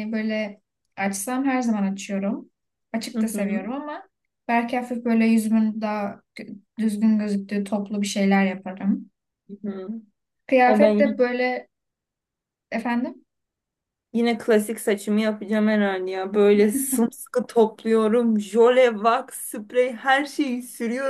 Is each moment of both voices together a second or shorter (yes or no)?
yes